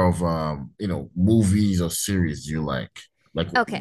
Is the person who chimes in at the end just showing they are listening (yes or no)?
no